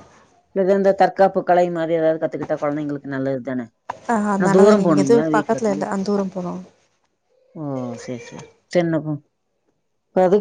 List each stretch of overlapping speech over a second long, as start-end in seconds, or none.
4.4-5.8